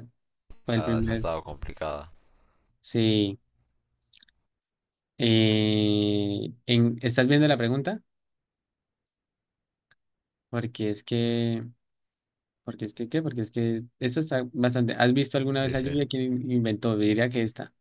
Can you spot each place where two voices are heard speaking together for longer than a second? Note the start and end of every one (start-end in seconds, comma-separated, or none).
none